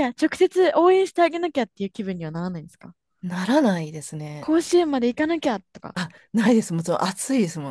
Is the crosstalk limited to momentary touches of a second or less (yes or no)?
yes